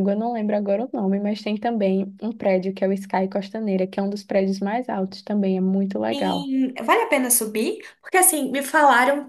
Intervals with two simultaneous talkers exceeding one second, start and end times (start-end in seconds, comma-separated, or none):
none